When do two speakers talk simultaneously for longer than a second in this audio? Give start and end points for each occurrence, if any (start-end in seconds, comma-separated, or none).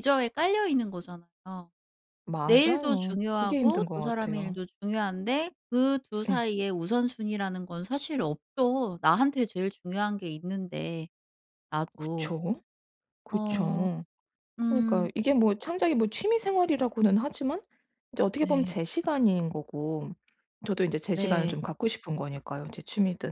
2.5-4.6